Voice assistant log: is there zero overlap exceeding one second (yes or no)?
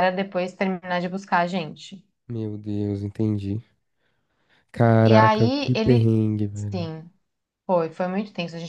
no